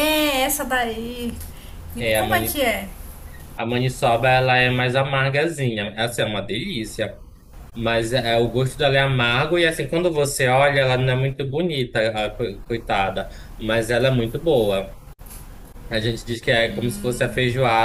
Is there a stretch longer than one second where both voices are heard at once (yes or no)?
no